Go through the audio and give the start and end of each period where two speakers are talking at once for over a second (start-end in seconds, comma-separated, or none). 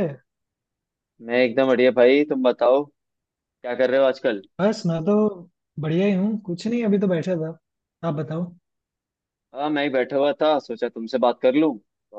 none